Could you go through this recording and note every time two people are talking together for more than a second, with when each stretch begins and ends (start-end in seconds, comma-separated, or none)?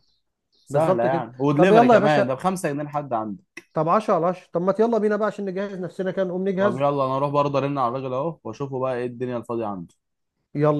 0.7-2.4